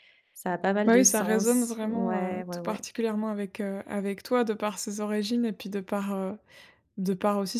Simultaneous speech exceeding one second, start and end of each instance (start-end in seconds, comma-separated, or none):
0.8-2.9